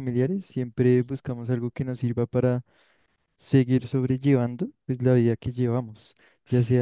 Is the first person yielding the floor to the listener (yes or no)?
no